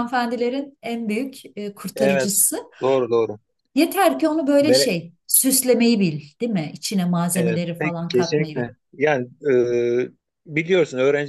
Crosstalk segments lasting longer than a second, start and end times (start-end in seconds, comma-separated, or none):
7.3-8.7